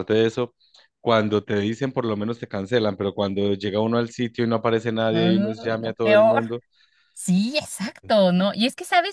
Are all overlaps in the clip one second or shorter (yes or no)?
no